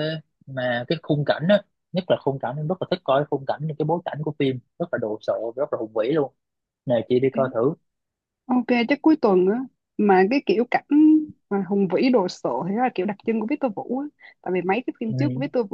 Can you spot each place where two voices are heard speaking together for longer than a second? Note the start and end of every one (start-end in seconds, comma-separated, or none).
none